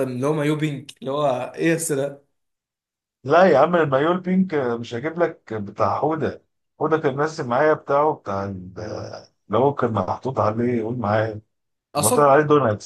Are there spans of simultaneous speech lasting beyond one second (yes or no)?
no